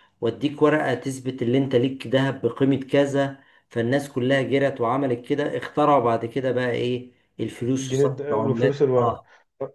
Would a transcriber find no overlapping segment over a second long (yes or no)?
no